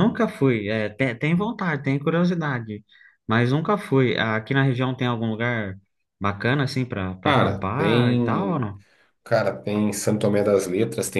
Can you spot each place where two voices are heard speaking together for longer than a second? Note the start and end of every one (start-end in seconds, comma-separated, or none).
7.2-8.6